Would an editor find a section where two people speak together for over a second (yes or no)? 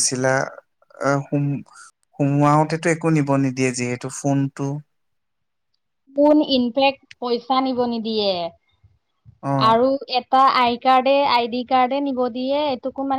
no